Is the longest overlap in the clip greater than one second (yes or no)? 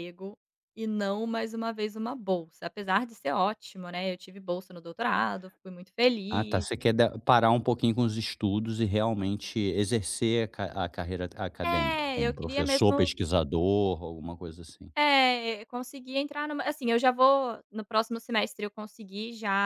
yes